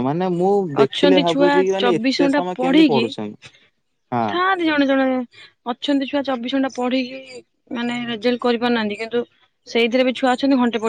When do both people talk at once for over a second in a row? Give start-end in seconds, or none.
0.8-3.0